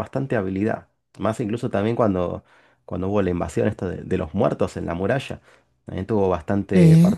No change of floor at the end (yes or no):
yes